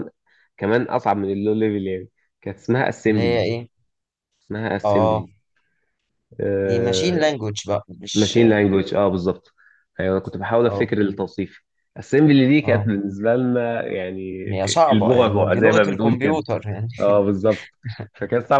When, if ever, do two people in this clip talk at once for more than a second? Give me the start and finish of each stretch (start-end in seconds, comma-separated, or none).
14.9-16.4